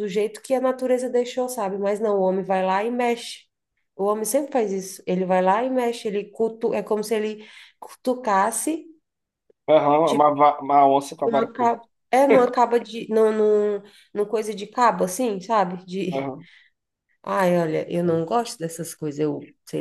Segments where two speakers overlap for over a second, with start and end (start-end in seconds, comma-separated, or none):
none